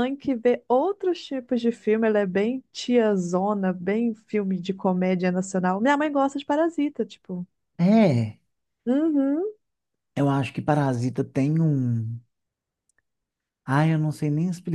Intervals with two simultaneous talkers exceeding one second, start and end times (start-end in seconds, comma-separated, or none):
none